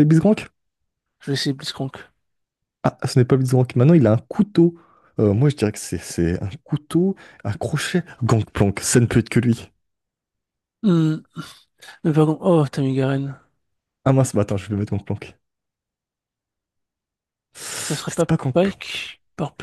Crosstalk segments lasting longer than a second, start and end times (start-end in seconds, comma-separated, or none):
17.8-19.1